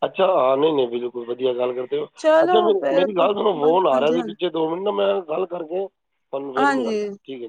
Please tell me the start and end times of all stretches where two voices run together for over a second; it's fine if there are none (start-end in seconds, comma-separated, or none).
2.2-4.3